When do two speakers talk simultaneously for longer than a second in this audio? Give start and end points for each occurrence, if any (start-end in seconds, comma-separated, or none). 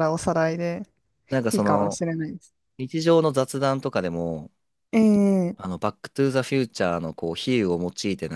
none